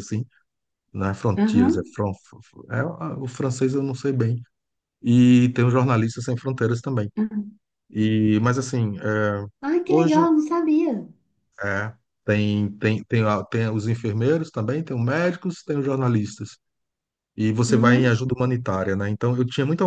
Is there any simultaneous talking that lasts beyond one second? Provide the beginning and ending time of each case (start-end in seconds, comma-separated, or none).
none